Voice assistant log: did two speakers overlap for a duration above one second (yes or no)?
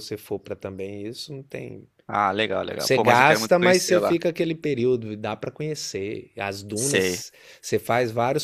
yes